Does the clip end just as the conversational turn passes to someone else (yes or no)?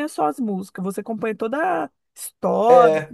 yes